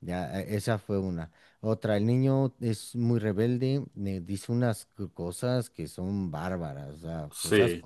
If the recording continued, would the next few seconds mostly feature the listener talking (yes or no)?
no